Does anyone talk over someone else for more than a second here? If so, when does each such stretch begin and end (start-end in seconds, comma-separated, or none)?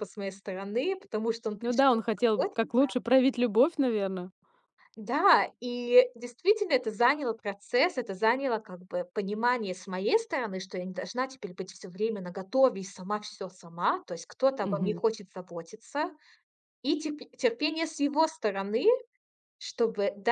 none